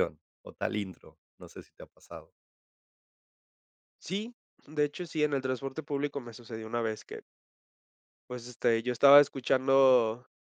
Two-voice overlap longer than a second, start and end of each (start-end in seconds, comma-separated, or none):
none